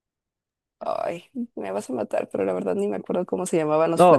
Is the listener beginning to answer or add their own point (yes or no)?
yes